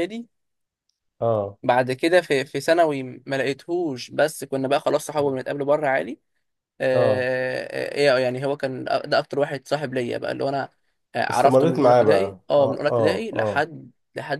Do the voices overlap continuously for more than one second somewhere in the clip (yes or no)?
yes